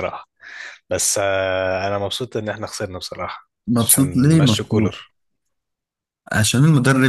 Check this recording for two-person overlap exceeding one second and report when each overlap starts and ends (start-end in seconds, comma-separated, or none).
3.7-4.9